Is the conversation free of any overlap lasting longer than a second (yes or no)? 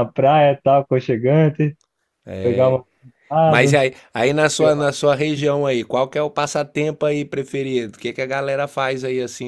yes